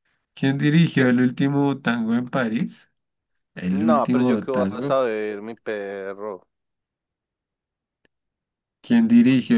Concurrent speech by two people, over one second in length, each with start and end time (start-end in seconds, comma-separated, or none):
3.7-5.0